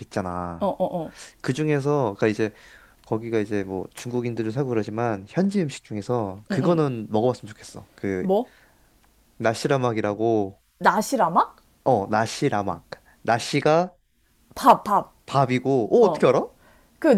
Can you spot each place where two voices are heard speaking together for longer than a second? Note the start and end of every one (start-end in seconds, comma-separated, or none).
none